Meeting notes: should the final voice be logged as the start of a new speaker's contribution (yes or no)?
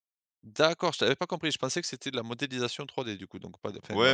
yes